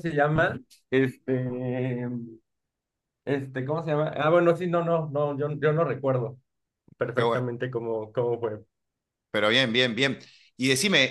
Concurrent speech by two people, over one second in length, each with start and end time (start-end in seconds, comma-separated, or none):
none